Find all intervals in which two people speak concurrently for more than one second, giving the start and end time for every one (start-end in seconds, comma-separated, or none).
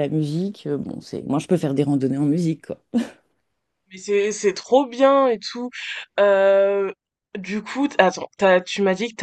none